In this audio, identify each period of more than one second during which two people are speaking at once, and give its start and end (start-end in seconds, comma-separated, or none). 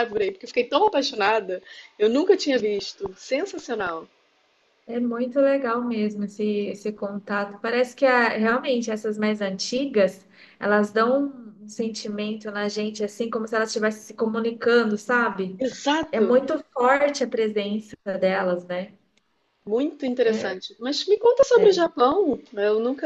none